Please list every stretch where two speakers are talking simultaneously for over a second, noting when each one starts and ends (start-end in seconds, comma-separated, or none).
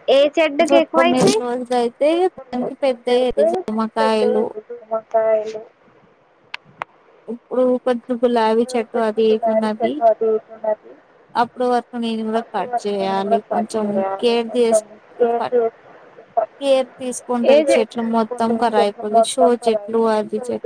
none